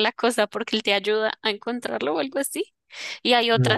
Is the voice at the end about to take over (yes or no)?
no